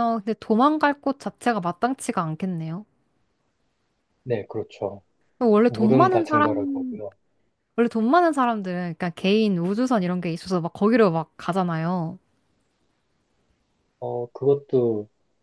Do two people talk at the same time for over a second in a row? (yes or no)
yes